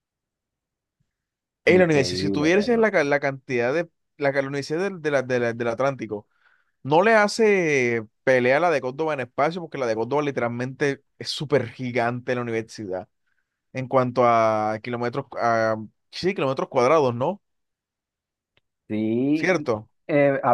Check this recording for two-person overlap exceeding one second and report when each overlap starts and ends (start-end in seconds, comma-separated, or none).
1.7-2.9